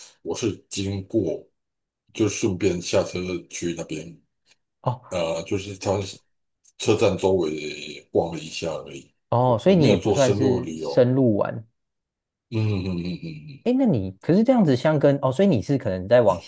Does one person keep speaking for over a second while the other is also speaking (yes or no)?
yes